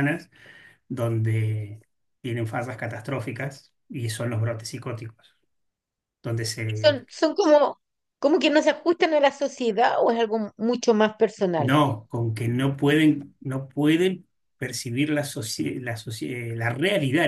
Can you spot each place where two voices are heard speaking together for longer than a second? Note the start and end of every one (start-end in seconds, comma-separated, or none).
none